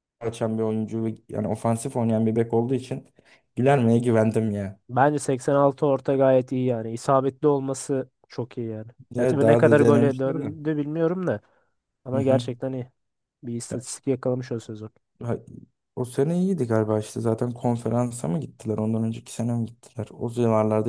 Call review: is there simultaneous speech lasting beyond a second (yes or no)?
yes